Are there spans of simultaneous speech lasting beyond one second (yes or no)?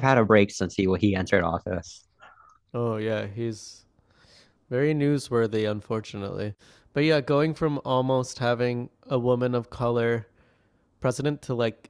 no